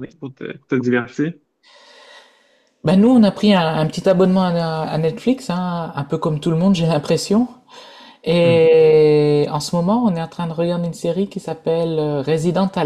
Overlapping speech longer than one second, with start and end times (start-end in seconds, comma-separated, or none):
none